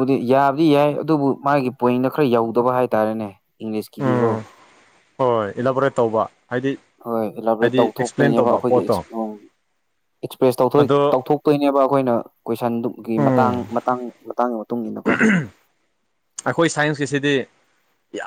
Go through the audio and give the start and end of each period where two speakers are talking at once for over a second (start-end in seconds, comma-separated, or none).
7.6-9.0